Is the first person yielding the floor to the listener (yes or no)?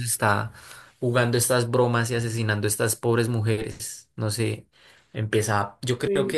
no